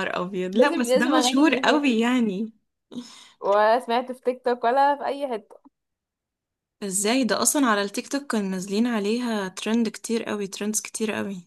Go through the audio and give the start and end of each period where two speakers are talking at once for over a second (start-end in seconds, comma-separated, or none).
0.5-1.8